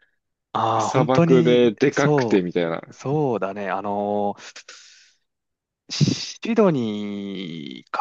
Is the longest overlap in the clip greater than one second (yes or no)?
yes